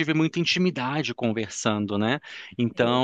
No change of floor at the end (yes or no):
yes